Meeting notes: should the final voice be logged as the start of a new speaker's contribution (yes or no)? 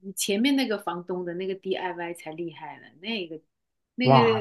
yes